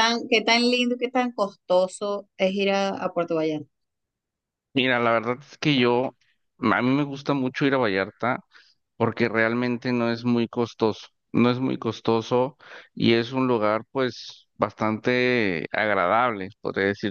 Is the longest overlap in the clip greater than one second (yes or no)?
no